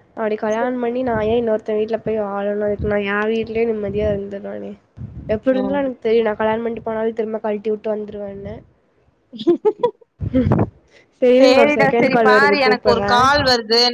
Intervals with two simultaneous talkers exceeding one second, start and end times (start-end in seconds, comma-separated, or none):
11.4-13.2